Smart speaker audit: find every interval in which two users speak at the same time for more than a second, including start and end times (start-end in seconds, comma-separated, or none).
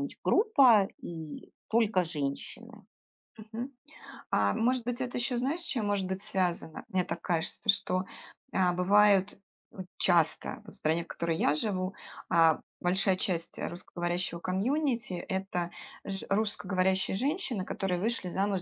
none